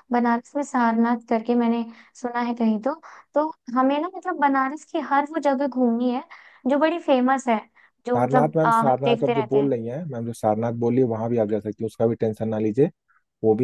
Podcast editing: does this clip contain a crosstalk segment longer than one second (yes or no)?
yes